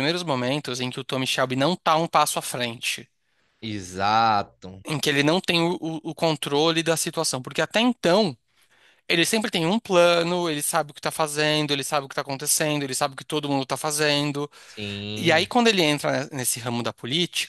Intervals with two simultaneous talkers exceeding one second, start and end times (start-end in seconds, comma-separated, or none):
none